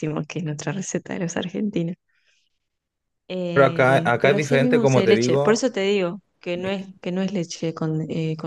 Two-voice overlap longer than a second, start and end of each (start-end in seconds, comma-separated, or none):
3.5-5.6